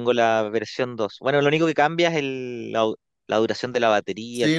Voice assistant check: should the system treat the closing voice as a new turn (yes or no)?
yes